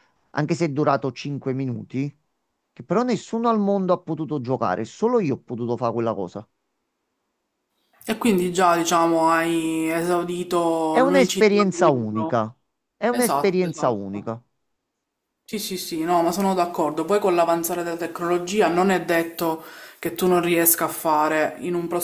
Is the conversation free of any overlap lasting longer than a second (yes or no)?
no